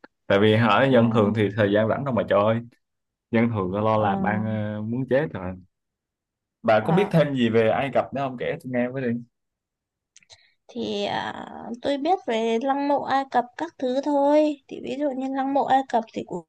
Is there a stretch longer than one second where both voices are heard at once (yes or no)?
no